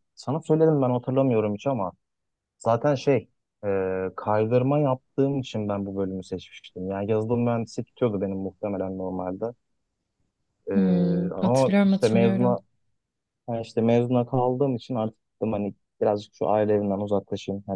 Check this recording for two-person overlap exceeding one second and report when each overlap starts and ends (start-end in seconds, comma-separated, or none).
11.3-12.5